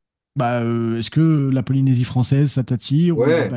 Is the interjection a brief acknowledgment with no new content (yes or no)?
no